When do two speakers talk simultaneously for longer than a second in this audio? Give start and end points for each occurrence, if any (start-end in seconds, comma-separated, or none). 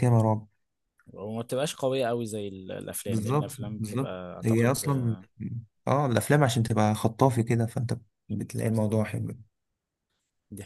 3.1-4.8